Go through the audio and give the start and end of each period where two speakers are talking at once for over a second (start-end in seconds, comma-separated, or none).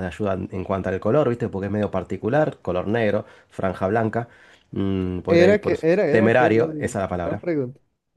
5.3-7.4